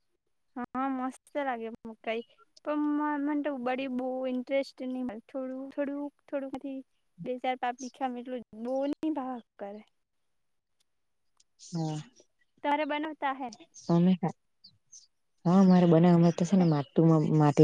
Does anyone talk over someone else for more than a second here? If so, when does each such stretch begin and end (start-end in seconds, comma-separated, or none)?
none